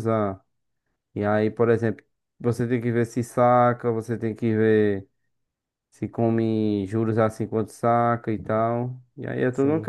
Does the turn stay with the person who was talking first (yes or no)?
no